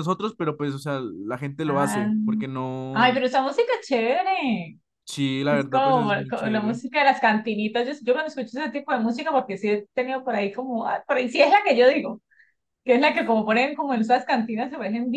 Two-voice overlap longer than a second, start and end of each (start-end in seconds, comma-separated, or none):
5.5-6.8